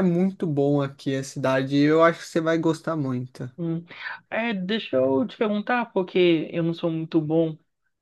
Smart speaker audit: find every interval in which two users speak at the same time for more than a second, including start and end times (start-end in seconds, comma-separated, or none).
none